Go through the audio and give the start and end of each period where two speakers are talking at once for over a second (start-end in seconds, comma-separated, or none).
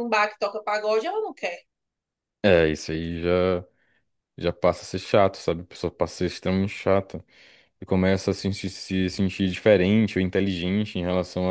none